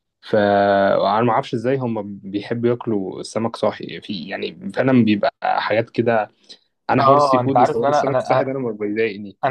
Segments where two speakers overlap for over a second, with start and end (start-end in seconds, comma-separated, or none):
7.0-8.5